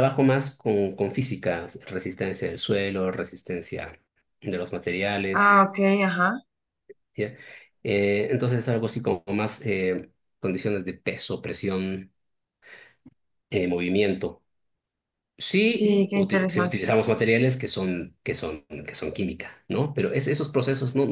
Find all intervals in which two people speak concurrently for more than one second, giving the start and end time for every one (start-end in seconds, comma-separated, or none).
15.7-16.9